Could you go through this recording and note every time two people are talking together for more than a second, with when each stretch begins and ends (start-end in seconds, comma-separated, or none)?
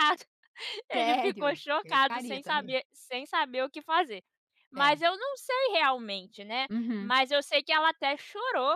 0.9-2.8